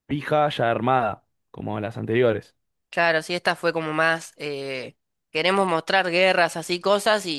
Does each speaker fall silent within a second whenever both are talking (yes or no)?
yes